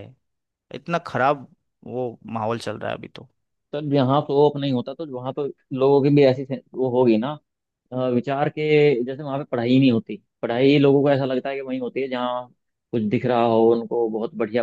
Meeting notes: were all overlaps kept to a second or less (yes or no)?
yes